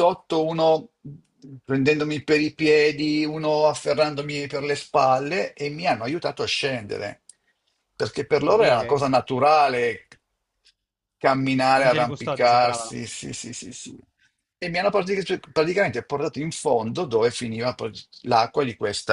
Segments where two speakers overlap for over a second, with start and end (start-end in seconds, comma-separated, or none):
11.8-13.0